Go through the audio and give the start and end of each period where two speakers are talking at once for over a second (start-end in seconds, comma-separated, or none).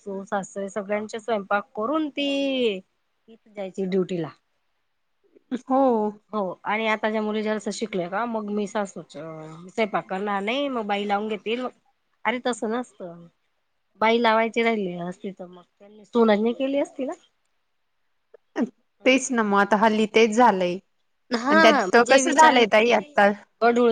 none